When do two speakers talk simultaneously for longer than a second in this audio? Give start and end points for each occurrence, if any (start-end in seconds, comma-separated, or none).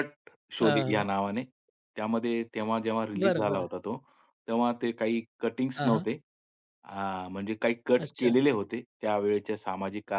none